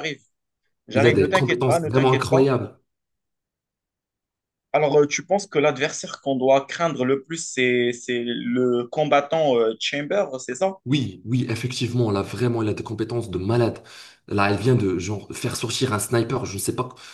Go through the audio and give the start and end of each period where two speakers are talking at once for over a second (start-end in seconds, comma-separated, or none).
0.9-2.5